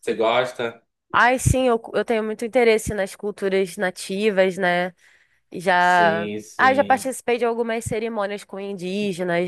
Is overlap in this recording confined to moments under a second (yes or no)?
no